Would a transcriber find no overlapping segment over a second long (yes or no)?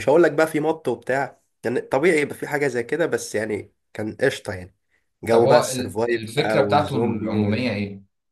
no